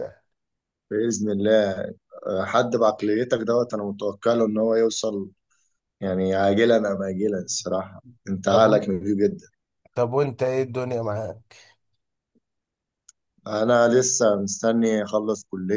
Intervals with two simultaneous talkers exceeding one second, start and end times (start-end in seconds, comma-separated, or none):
none